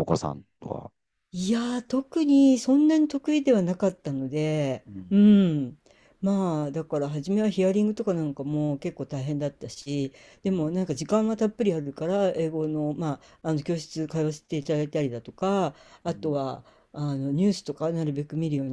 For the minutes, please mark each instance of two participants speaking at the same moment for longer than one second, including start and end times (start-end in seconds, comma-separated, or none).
none